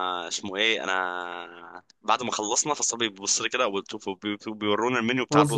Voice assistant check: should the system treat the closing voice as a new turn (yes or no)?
no